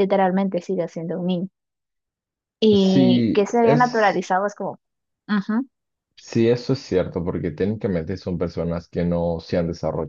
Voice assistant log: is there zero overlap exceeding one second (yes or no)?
no